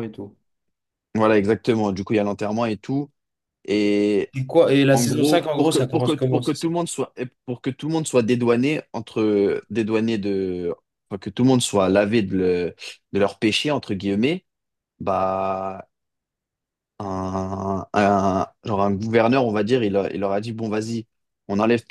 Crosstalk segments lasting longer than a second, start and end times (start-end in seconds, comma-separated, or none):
4.9-6.7